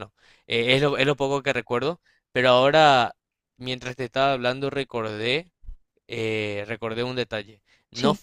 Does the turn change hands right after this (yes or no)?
no